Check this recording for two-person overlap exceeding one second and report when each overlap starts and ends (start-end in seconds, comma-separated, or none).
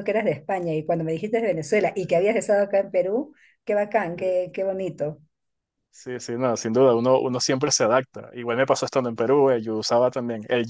none